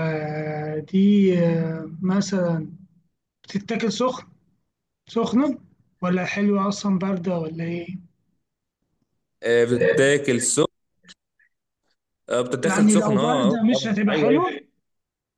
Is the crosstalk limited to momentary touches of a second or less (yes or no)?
no